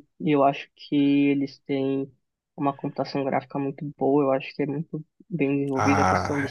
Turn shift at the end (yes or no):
yes